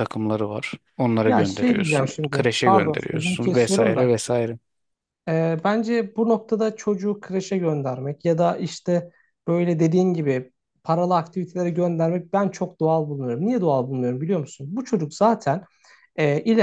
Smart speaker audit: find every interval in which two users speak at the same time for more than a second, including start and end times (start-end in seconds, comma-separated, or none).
1.2-4.2